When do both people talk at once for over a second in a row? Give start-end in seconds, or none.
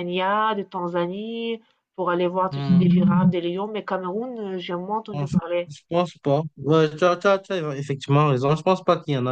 none